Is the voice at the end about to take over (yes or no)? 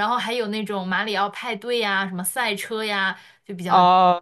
yes